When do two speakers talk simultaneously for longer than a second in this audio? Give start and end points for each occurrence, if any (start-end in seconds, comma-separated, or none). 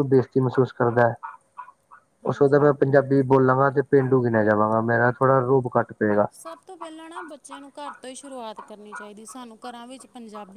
none